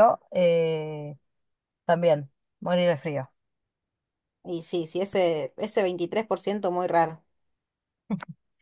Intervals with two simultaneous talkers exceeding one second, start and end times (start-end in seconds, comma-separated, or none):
none